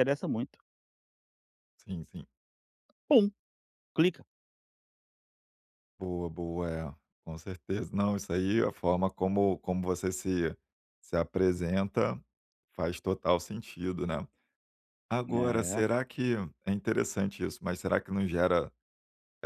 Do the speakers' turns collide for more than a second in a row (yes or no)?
no